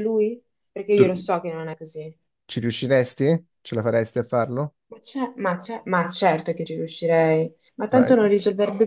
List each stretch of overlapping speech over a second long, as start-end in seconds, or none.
none